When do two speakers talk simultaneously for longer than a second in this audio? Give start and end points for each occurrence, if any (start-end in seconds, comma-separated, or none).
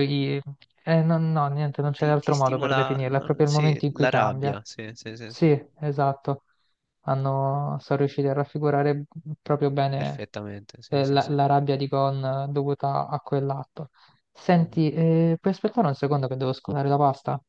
2.0-4.6